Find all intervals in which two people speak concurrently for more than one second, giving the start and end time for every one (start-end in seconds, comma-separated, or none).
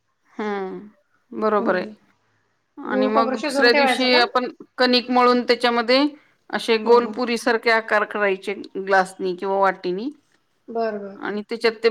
2.9-4.2